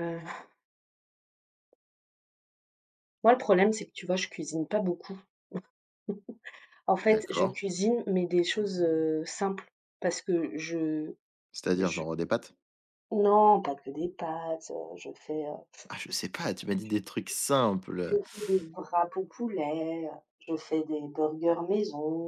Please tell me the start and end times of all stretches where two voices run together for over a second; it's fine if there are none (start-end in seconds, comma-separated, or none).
none